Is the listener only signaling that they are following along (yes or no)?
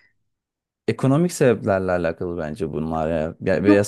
no